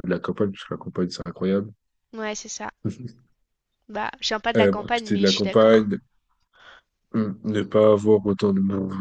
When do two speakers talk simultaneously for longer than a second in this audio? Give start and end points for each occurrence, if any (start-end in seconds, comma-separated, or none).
4.5-5.9